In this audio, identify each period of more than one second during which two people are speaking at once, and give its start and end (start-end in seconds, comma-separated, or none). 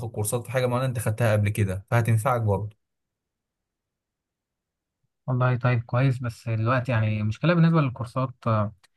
none